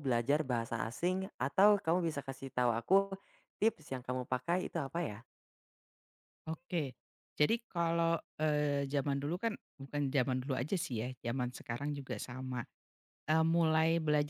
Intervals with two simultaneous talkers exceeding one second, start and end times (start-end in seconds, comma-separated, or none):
none